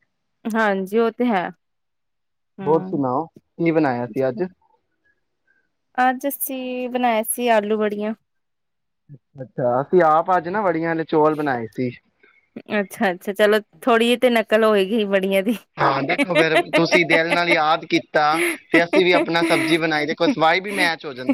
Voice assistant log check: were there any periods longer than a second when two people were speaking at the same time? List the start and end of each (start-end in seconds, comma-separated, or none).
none